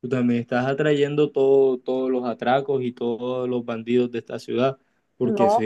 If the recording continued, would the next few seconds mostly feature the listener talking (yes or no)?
no